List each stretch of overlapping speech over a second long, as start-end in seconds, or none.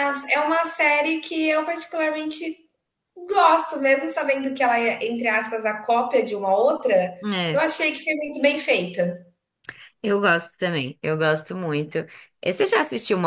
none